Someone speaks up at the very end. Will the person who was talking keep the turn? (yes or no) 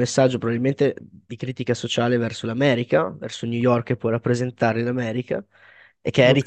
yes